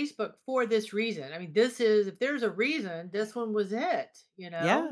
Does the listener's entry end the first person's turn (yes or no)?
yes